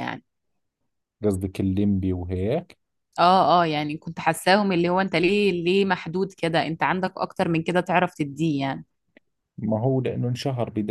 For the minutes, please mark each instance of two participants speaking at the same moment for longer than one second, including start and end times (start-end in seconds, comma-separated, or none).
none